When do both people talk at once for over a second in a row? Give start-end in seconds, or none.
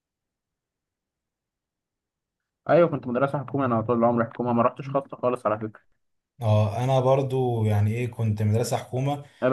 none